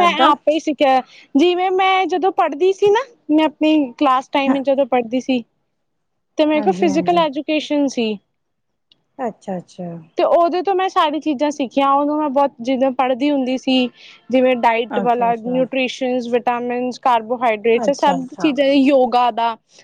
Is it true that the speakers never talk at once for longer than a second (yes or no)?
yes